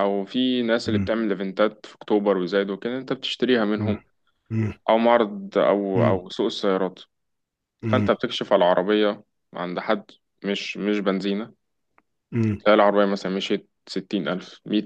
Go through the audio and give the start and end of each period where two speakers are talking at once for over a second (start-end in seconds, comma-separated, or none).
none